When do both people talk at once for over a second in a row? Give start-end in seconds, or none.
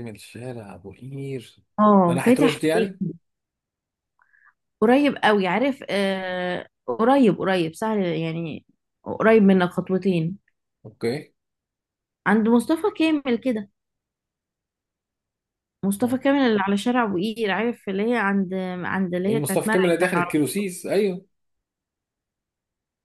19.3-20.7